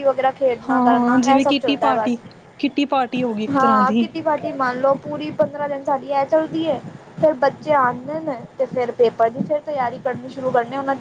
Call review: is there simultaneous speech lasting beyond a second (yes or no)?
yes